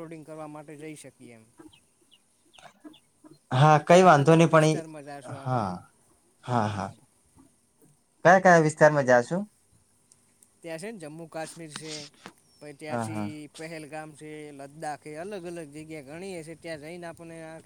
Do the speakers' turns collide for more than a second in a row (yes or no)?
yes